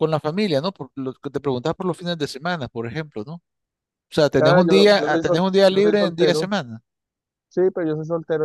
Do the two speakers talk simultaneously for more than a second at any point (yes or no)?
yes